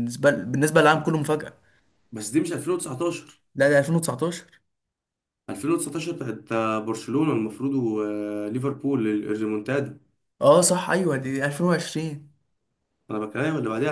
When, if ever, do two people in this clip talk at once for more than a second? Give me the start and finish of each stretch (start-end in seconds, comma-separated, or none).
none